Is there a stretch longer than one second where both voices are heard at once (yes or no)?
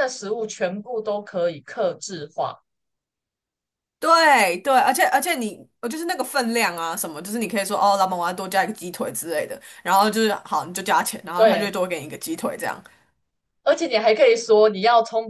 no